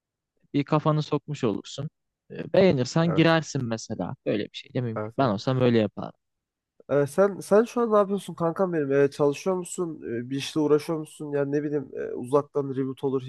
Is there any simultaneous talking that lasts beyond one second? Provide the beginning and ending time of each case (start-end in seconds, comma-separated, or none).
none